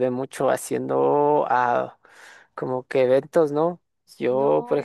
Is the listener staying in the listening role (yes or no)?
yes